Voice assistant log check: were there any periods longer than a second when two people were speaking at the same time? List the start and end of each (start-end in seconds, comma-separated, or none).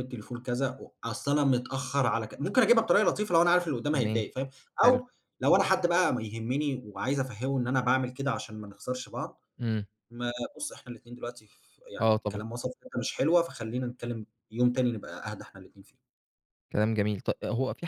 none